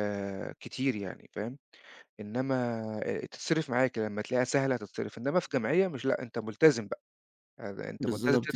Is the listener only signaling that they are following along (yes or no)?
yes